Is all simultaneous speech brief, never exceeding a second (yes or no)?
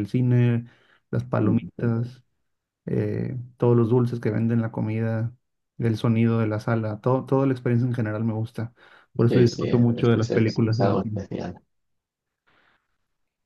no